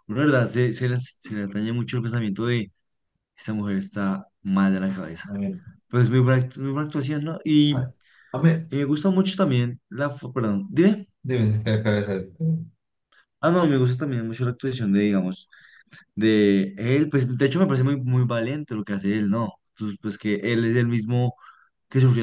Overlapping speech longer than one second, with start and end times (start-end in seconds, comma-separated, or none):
none